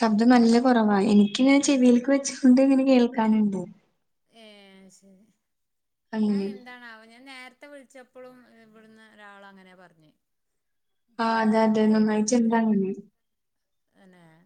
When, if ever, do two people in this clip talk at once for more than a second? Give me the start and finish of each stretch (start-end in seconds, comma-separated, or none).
11.3-12.8